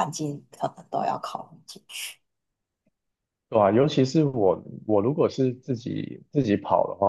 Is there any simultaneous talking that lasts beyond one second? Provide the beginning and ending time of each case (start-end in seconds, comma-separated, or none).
none